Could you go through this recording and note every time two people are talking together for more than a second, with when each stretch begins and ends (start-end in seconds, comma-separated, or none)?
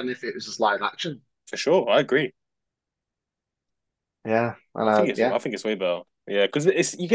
none